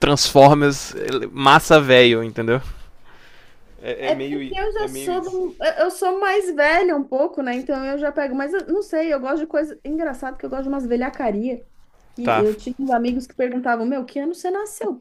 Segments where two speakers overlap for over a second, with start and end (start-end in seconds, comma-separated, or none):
4.0-5.4